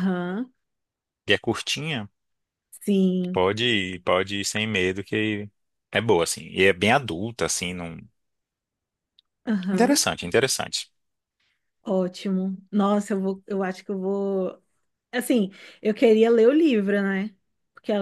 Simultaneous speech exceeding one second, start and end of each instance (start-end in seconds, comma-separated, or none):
none